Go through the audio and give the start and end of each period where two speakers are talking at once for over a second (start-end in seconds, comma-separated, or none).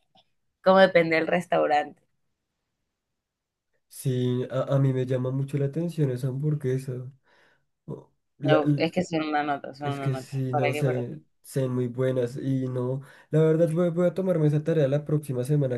9.8-11.0